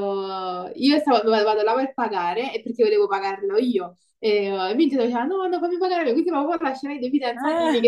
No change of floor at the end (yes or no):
yes